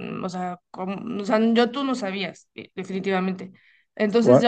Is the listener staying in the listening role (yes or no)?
no